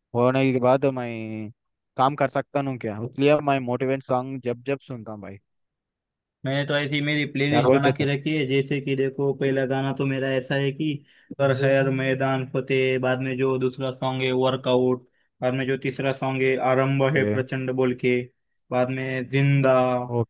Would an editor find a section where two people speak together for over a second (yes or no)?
no